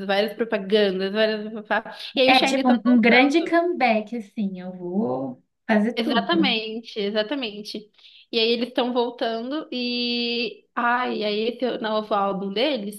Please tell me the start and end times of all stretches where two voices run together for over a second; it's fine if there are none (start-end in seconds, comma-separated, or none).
2.2-3.5